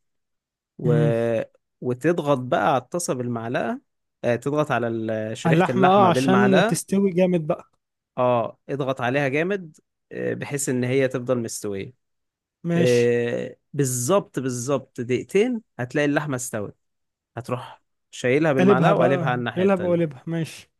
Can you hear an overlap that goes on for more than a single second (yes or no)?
yes